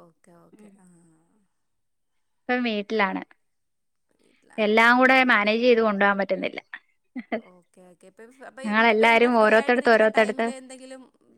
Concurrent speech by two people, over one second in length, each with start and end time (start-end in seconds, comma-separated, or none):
8.7-10.4